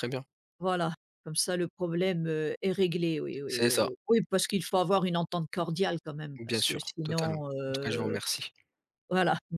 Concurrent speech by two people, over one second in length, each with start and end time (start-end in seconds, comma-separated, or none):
6.4-8.2